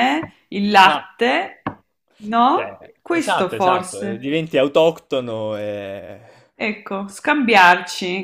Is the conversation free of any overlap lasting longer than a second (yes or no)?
no